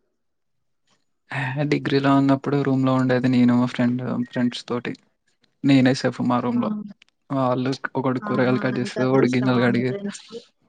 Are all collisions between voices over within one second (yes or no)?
no